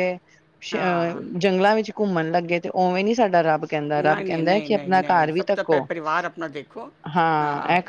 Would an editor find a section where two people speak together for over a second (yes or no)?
yes